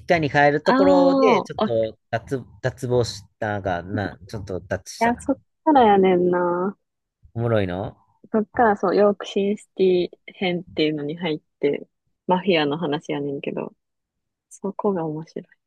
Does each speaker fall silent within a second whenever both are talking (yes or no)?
no